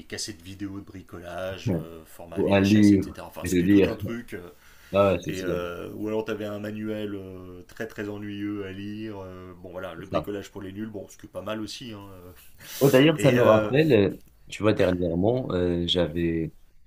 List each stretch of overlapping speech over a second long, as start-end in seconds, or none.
2.3-4.0